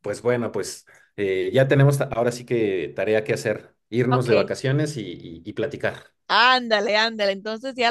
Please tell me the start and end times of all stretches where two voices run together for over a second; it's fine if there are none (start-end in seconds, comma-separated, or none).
none